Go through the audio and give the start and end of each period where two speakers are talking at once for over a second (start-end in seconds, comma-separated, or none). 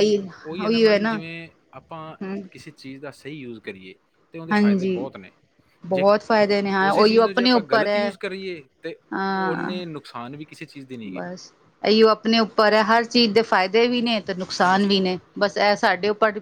6.9-8.1